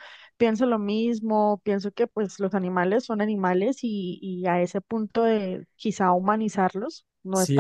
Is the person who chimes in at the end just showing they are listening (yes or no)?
no